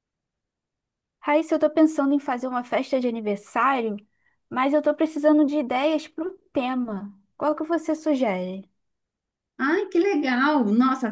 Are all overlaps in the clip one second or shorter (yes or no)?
yes